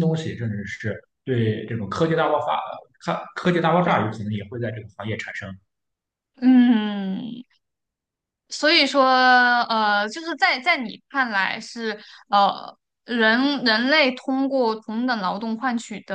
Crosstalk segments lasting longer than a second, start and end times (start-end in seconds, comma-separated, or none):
none